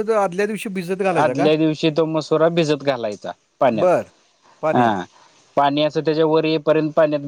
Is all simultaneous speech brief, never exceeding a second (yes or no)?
yes